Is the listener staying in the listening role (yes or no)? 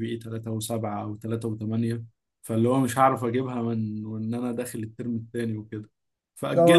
no